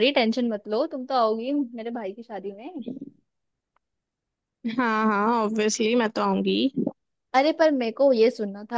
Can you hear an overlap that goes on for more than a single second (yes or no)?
no